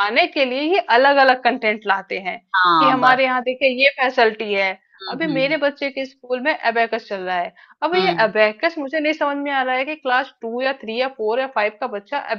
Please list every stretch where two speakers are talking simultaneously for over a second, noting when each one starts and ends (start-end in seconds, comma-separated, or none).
none